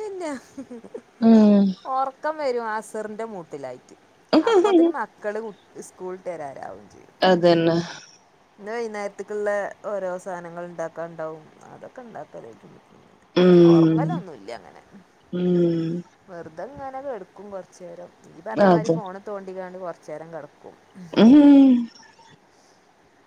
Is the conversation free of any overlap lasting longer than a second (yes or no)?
yes